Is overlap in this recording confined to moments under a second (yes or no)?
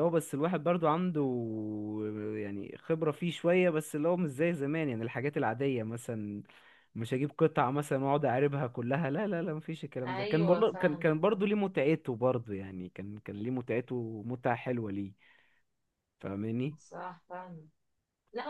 no